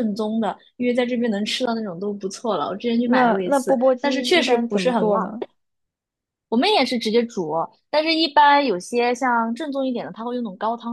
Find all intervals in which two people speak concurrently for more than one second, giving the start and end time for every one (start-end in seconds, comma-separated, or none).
3.0-5.3